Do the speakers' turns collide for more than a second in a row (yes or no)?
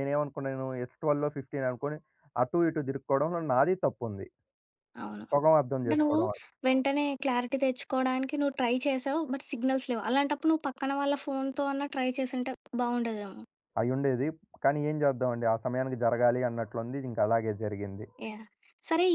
no